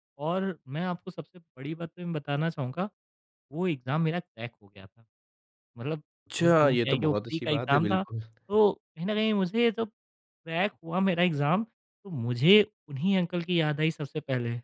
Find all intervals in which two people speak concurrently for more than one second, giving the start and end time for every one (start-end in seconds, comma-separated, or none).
6.3-8.0